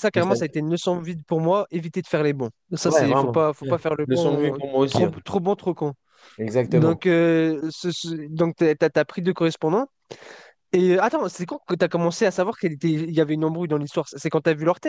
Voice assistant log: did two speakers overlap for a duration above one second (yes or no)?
yes